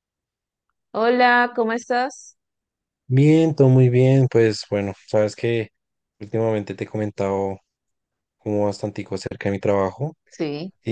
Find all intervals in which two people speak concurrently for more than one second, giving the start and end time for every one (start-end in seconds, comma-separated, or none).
none